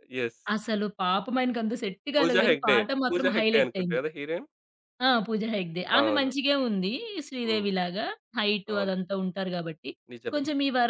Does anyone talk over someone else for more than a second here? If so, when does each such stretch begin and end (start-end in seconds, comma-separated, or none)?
2.2-4.0